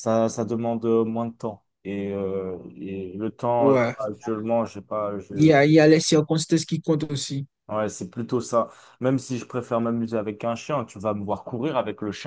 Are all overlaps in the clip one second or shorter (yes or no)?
yes